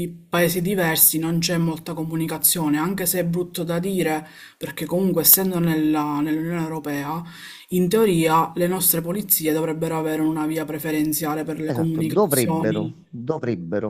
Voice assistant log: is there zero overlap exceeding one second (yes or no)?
no